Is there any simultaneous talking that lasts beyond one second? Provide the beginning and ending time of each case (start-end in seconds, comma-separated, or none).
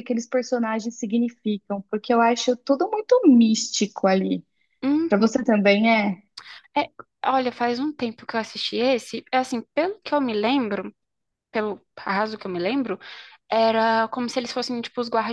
none